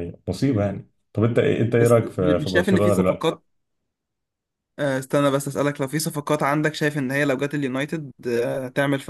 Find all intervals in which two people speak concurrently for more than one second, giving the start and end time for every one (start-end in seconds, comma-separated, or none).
1.8-3.4